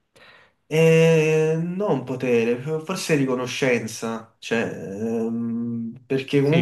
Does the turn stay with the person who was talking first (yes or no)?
no